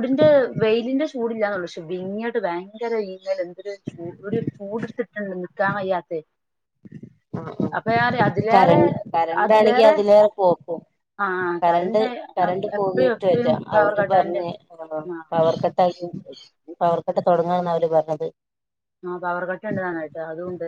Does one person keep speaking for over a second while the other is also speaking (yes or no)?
yes